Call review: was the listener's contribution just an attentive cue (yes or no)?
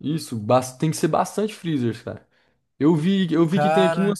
yes